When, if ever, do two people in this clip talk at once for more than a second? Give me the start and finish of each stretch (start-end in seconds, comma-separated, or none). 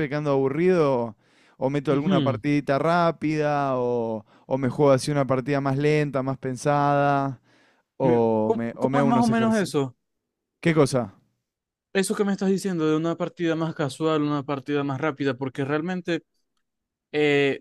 8.0-9.7